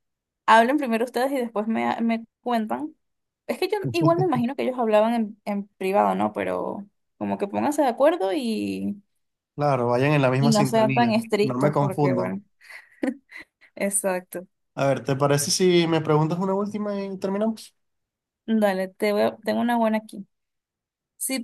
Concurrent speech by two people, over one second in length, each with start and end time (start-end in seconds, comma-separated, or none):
10.4-12.4